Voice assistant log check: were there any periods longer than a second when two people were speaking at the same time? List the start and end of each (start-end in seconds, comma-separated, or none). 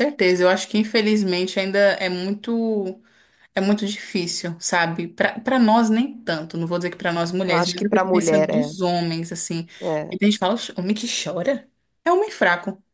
7.5-8.7